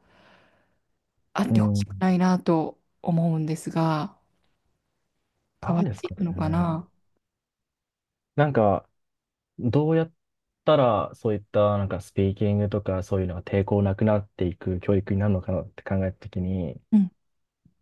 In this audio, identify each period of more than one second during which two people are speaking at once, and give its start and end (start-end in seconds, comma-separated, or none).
5.7-6.9